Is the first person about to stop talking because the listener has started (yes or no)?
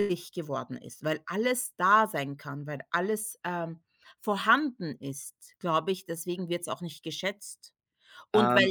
no